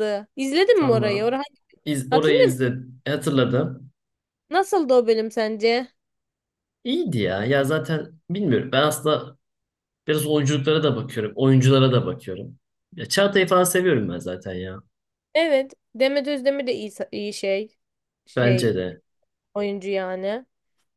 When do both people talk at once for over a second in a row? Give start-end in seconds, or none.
none